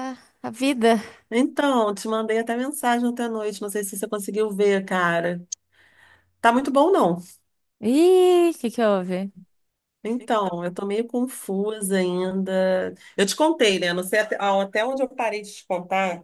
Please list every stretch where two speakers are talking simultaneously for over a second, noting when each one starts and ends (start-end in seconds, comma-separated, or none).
none